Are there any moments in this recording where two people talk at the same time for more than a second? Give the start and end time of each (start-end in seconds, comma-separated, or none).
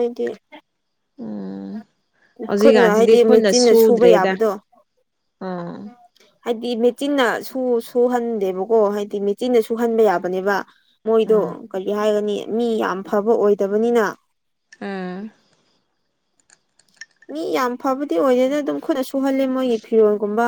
2.6-4.3